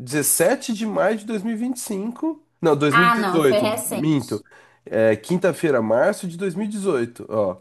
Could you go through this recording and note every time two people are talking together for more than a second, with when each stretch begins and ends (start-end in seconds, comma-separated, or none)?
2.9-4.4